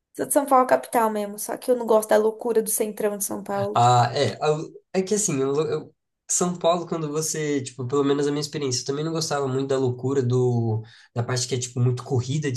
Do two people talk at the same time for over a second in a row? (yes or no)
no